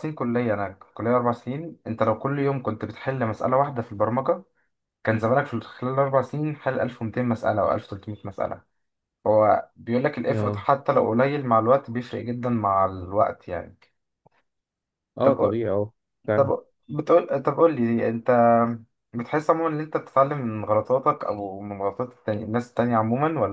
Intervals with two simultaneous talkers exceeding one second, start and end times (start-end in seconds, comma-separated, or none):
none